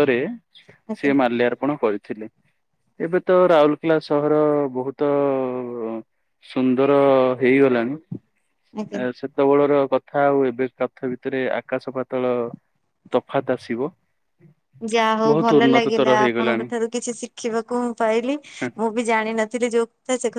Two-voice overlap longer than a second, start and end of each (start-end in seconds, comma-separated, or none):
15.3-16.7